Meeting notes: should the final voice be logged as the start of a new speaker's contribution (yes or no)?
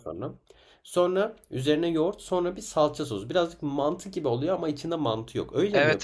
yes